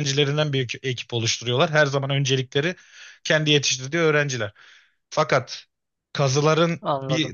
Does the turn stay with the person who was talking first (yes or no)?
yes